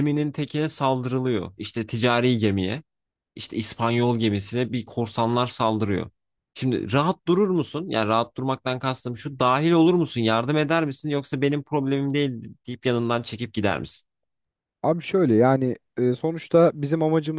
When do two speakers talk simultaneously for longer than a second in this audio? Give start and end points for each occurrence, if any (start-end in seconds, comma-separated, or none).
none